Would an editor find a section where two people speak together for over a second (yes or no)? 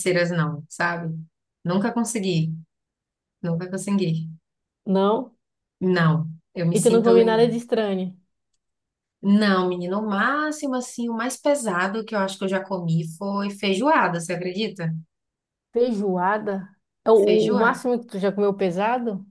no